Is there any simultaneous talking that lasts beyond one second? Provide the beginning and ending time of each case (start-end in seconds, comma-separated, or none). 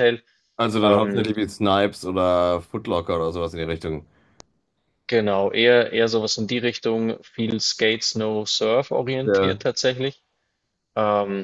none